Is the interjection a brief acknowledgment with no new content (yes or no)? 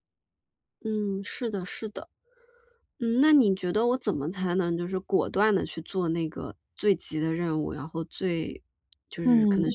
yes